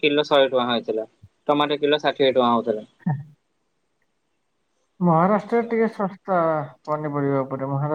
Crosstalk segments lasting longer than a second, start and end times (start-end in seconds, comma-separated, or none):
none